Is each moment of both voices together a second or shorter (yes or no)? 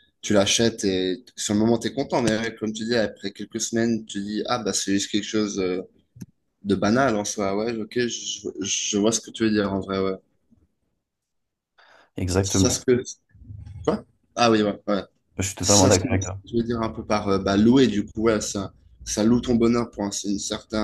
yes